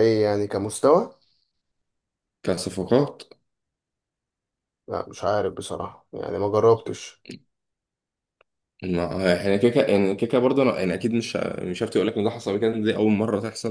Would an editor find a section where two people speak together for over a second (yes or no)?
no